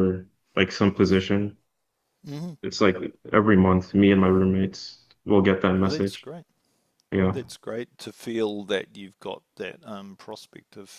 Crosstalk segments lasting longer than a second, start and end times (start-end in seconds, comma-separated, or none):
none